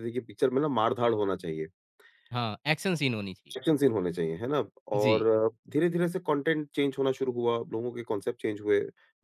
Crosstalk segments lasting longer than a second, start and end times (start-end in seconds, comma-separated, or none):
none